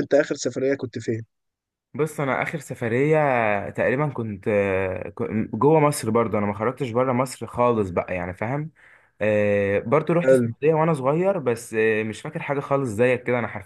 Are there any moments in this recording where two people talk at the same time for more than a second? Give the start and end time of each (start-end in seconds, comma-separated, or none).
none